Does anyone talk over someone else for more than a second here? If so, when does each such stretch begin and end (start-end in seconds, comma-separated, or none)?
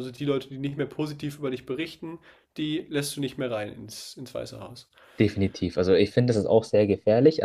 none